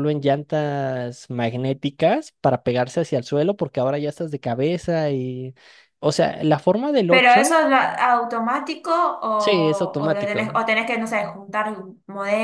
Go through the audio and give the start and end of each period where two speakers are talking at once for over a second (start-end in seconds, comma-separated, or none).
9.4-10.6